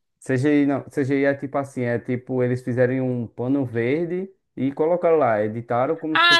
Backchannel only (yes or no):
no